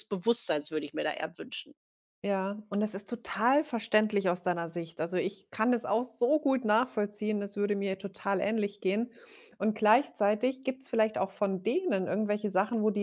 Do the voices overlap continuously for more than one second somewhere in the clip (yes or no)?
no